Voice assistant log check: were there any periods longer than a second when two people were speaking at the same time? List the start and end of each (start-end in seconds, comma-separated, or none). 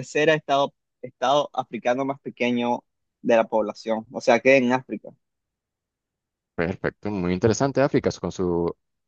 none